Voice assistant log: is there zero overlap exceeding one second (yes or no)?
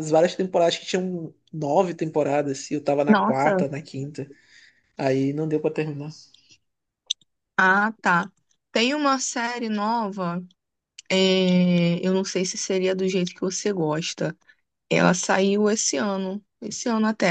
yes